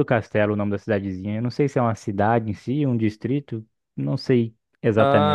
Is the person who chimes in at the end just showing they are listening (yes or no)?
no